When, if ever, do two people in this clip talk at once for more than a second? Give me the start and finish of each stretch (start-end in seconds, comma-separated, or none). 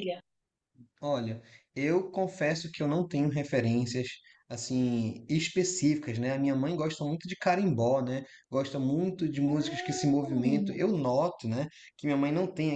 9.5-10.8